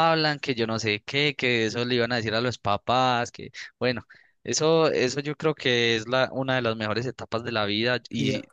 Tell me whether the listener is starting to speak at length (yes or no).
no